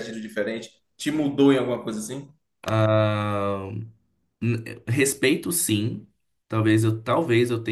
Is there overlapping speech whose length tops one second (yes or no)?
no